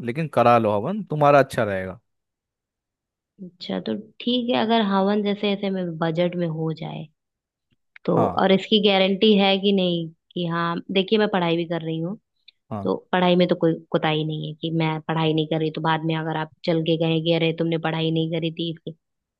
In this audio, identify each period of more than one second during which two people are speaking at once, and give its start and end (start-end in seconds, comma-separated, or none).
none